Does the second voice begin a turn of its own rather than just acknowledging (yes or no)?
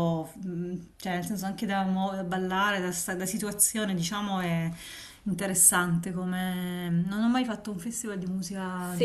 yes